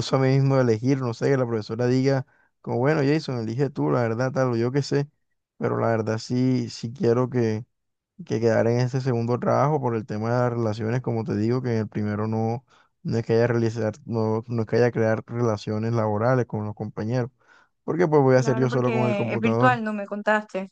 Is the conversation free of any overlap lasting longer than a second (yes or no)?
no